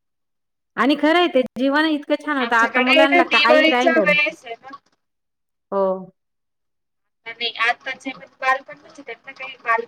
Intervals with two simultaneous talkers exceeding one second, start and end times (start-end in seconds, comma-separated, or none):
2.4-4.1